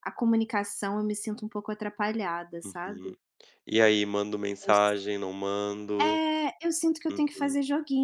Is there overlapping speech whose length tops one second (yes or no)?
no